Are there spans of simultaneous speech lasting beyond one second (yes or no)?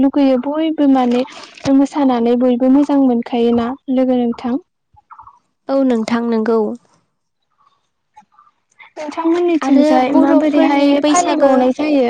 yes